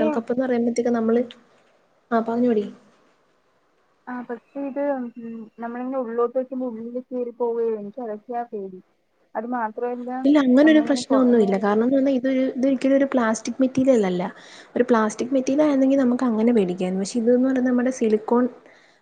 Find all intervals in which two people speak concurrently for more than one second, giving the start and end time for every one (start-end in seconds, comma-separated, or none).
none